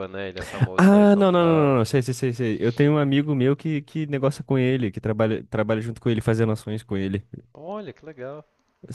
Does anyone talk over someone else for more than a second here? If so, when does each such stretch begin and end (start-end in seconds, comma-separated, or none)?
0.8-2.0